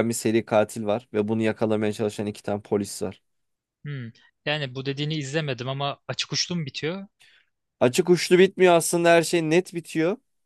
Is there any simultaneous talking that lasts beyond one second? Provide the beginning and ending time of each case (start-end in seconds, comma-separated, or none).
none